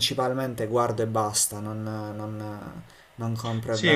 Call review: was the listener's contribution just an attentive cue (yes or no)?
no